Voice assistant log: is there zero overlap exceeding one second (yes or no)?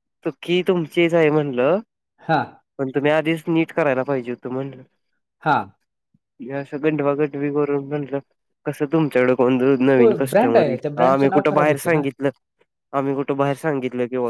no